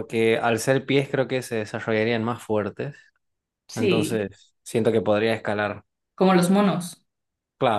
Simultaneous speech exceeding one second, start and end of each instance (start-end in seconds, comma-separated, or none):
none